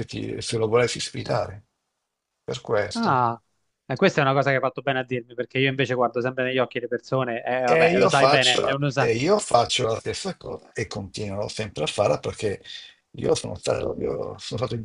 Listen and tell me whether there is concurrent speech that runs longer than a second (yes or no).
yes